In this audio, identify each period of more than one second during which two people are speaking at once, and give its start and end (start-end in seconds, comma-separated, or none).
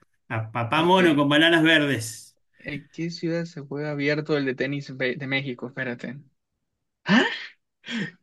none